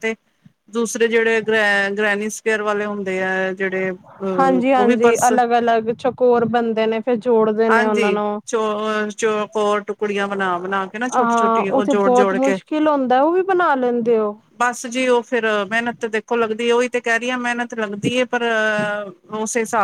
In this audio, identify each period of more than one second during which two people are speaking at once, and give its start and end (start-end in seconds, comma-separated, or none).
11.1-12.6